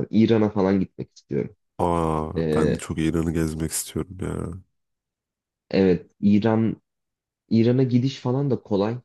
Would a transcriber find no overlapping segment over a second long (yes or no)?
yes